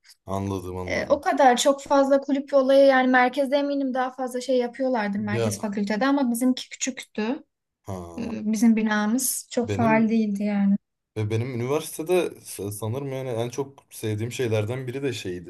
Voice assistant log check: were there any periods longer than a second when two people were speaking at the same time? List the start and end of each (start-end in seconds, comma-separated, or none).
none